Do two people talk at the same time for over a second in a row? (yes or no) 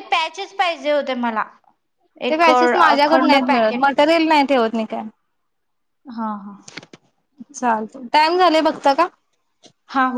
yes